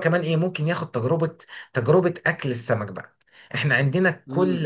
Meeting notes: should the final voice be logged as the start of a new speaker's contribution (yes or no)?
no